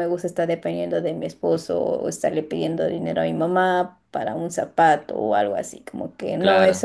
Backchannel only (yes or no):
yes